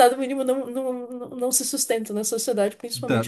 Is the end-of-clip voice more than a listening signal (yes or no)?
yes